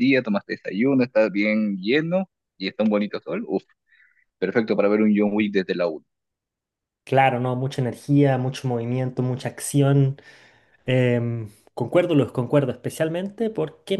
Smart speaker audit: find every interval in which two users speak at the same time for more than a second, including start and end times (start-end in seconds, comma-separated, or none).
none